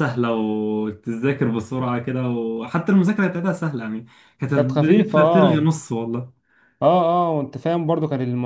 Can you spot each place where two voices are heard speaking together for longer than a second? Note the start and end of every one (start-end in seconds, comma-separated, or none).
4.5-5.8